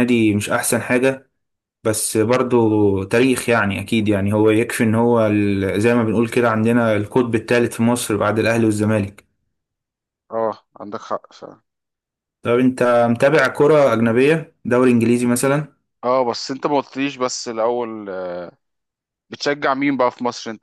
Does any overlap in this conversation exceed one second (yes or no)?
no